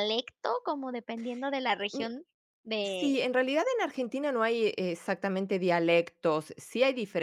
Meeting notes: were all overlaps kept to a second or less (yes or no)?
yes